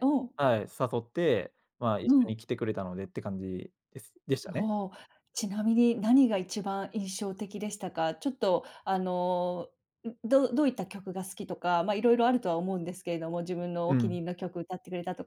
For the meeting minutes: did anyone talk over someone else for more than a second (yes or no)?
no